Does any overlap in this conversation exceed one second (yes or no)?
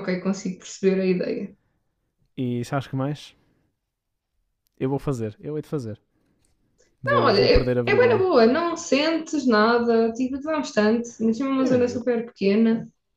yes